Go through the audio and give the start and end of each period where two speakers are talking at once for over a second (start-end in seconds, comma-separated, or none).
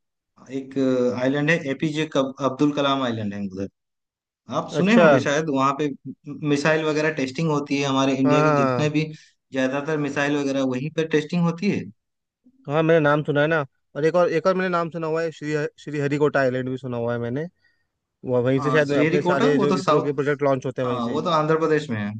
18.6-20.2